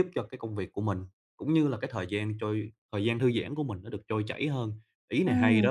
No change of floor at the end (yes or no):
no